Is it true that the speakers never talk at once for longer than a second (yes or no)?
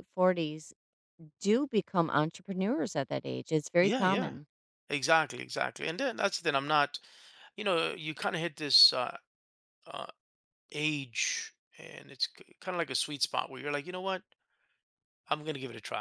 yes